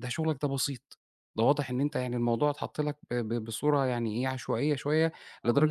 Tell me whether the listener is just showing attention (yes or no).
yes